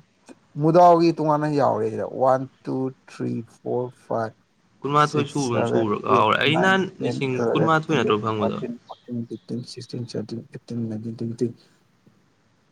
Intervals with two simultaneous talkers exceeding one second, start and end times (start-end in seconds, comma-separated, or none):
5.1-8.6